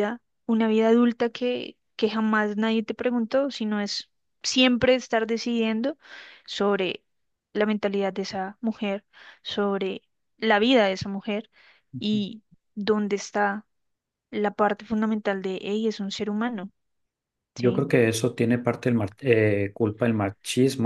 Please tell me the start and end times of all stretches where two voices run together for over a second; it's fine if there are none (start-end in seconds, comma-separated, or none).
none